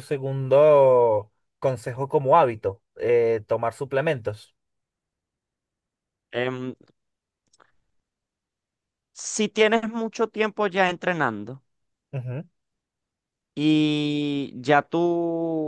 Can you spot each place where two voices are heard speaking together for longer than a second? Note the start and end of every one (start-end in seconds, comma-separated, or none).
none